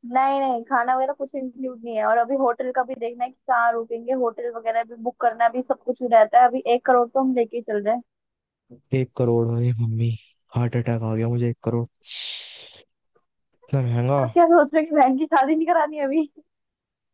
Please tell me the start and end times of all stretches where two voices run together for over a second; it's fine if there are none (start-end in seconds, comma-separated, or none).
none